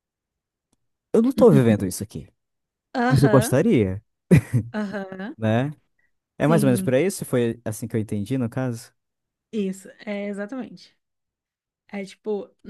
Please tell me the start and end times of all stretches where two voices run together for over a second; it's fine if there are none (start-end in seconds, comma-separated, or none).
none